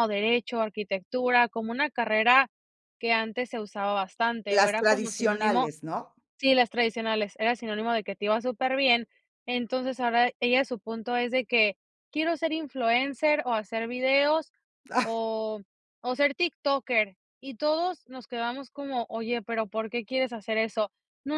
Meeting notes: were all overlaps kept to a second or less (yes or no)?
no